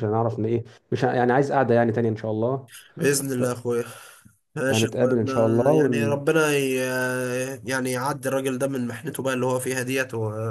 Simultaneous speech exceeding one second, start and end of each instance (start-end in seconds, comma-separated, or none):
4.7-6.2